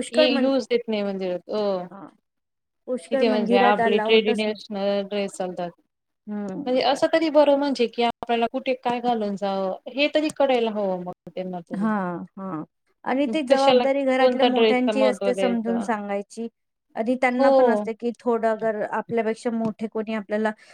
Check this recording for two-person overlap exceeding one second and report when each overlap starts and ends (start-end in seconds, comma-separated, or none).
13.5-15.8